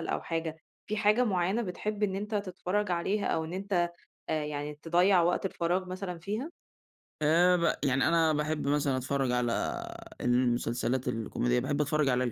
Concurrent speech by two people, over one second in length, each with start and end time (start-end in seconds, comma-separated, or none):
none